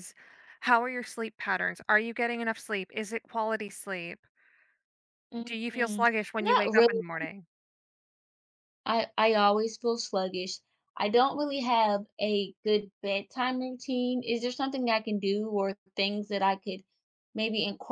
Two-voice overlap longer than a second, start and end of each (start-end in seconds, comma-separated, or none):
5.4-7.0